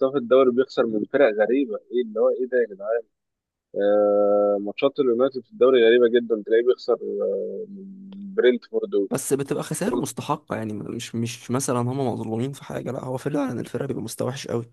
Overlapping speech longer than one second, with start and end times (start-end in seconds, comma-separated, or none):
none